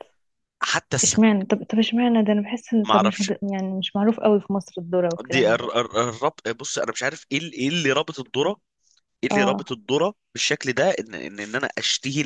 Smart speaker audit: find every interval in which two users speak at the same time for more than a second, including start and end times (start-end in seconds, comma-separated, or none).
none